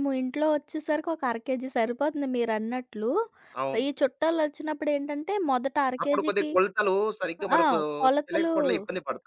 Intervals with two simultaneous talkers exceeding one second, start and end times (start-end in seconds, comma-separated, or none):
none